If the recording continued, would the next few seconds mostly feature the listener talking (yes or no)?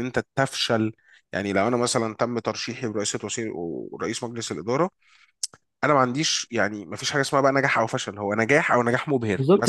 yes